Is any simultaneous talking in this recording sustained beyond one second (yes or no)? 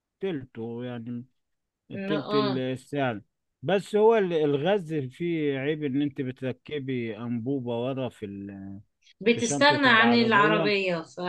yes